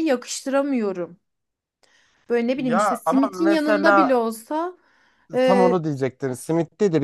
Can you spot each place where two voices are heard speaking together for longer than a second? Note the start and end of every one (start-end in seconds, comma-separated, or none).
2.6-4.2